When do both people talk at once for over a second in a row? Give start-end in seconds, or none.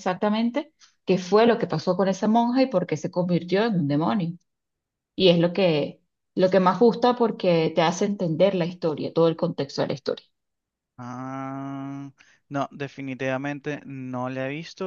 none